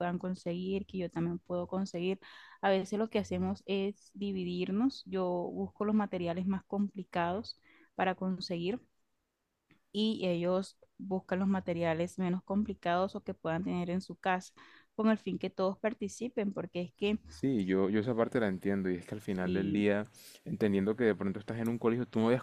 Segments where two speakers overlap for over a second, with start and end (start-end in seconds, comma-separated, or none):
none